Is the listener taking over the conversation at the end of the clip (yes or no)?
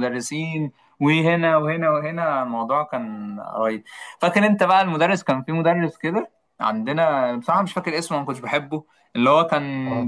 no